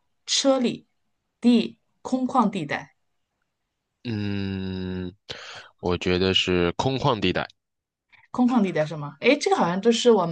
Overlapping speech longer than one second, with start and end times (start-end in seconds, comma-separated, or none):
none